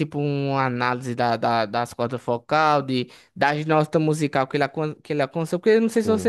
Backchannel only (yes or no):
yes